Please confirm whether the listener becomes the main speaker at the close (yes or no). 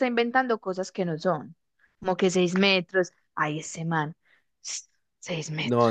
yes